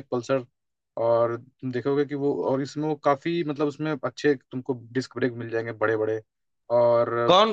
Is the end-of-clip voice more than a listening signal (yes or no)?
yes